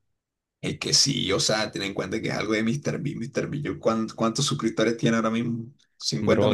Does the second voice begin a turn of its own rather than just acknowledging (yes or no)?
yes